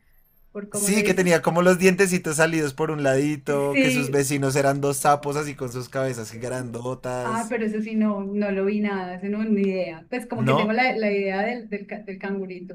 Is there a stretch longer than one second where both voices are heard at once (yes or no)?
no